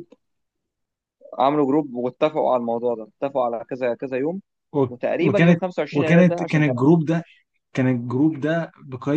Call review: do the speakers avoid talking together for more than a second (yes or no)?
no